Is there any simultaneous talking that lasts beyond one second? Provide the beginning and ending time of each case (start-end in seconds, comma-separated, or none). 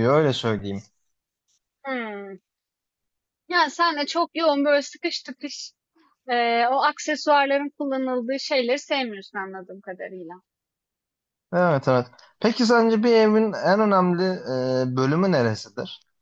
none